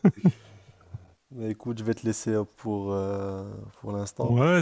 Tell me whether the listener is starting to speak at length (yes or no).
yes